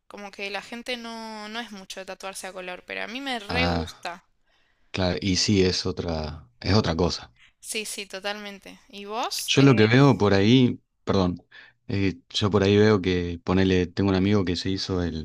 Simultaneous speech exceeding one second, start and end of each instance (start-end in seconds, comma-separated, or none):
none